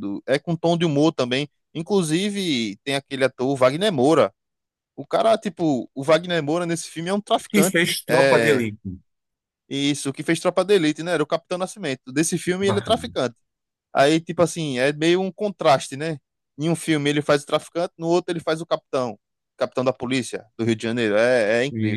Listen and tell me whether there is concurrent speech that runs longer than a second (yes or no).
yes